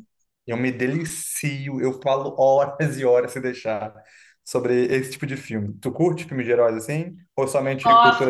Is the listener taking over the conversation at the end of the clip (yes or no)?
yes